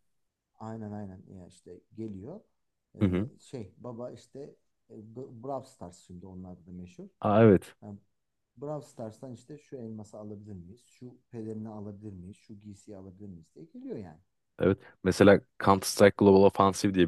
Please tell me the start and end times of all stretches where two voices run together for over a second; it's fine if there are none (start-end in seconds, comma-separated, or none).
none